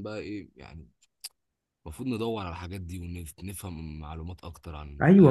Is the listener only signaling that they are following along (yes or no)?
no